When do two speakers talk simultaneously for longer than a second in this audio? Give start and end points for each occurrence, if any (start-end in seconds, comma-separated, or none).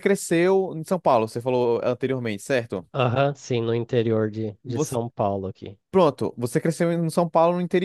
none